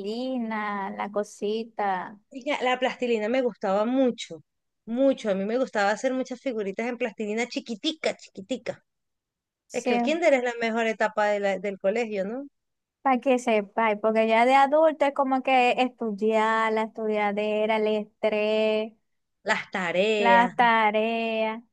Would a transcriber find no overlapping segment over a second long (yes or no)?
yes